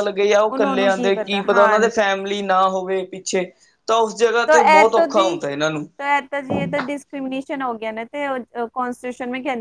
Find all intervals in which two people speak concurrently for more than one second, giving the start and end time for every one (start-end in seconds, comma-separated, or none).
none